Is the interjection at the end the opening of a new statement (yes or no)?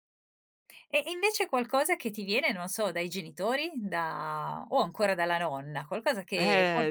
yes